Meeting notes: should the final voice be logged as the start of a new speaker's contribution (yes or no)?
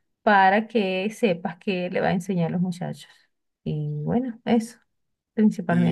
yes